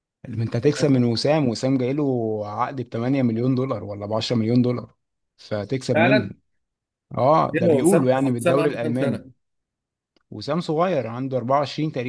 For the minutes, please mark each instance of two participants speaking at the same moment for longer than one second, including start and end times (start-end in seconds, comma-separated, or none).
7.5-9.2